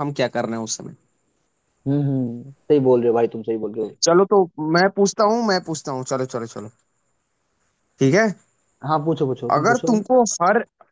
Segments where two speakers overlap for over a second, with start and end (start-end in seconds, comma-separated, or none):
none